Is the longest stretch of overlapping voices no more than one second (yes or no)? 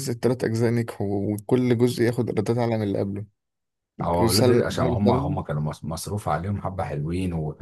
no